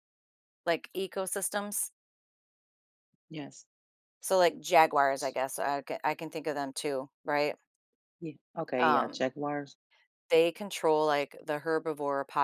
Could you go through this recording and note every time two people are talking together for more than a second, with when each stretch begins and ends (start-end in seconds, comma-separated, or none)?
none